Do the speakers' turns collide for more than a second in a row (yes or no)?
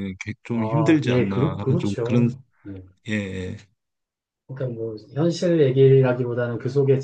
yes